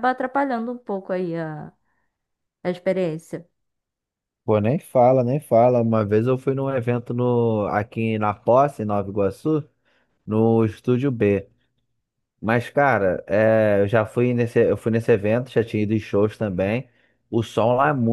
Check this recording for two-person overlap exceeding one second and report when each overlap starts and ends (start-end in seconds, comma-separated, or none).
none